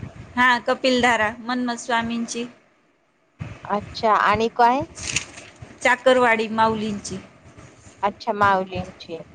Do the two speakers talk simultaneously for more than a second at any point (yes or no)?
no